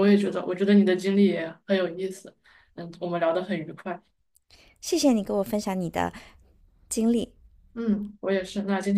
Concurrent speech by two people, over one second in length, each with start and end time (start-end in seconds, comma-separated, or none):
none